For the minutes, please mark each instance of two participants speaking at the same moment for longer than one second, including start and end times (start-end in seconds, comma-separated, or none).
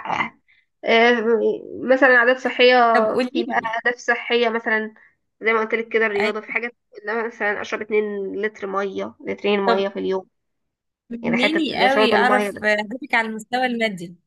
11.2-12.7